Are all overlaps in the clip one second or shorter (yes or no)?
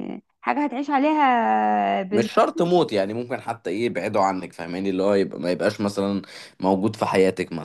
yes